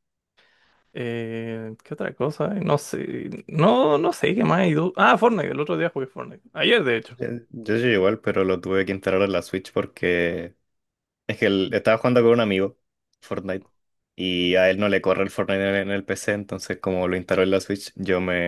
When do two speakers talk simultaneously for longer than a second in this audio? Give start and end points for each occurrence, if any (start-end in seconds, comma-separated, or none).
none